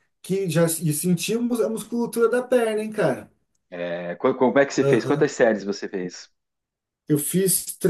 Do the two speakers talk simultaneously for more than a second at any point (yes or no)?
no